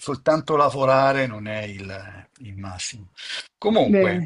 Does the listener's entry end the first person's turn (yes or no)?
no